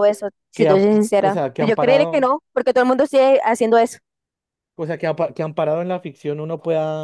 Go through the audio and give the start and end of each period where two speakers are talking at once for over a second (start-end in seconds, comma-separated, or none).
0.5-2.3